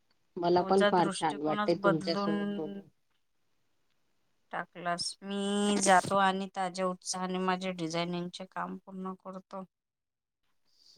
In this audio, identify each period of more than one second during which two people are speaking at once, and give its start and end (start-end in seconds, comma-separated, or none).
1.0-2.8